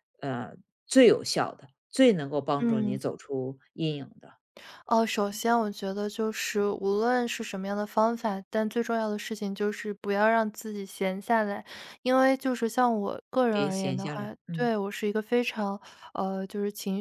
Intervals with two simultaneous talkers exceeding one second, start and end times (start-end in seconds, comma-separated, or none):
13.5-14.7